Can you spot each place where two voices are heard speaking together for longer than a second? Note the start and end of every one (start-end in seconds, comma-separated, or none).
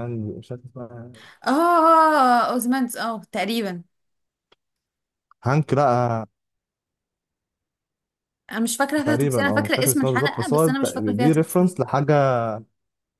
9.1-11.7